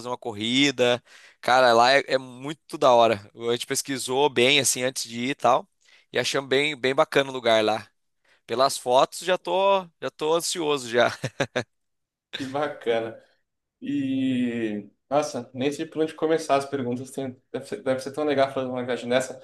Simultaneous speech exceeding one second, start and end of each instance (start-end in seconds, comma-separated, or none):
none